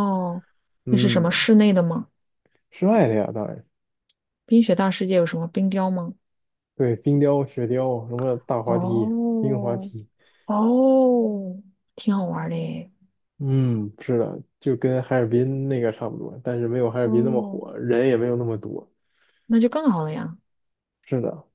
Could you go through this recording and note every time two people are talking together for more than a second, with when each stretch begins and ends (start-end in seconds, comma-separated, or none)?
8.7-9.9